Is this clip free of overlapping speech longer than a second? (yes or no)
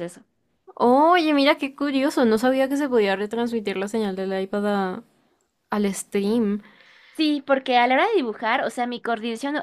yes